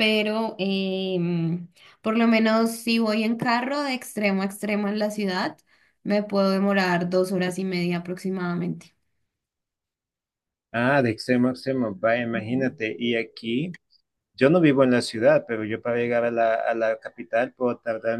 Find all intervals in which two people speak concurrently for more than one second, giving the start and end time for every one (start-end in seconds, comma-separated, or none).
none